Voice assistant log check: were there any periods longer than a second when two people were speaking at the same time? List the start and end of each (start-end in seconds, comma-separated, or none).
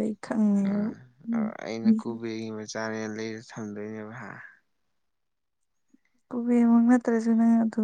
none